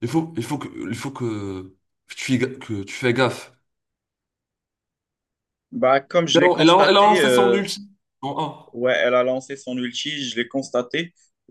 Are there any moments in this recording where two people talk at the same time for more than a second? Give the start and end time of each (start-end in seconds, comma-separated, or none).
6.3-7.6